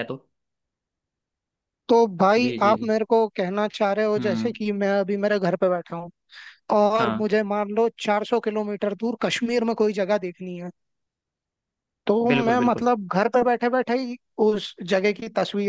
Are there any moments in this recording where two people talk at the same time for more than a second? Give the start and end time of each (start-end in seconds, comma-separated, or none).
none